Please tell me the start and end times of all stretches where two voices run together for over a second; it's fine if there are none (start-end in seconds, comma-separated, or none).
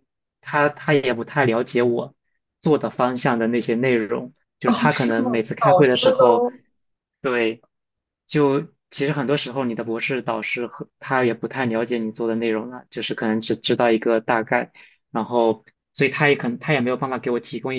4.7-6.5